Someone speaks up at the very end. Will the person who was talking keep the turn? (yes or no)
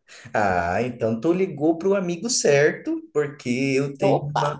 yes